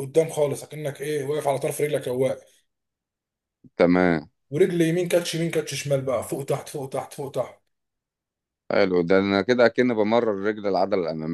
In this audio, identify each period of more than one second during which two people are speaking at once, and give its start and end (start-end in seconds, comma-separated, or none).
none